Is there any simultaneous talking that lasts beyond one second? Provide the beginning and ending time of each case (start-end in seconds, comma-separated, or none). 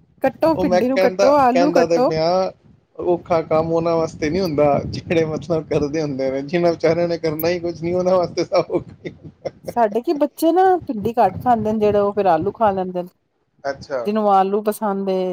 0.6-2.1